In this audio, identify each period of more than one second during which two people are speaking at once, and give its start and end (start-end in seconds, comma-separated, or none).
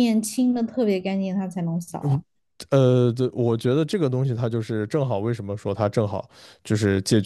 none